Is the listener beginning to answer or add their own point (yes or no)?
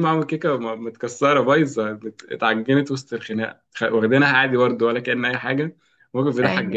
no